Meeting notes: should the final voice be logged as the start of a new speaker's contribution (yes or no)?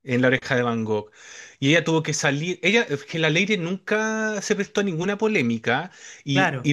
no